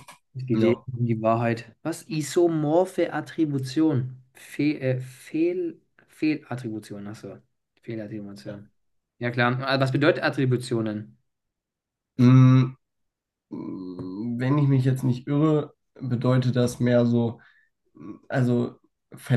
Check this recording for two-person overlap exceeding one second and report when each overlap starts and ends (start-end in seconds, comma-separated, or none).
none